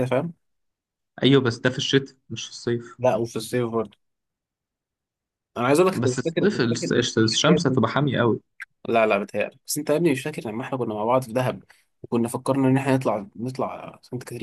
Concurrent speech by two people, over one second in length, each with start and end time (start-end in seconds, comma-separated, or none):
6.0-7.8